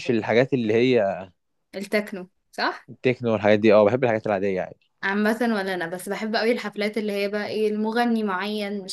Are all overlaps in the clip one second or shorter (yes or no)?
yes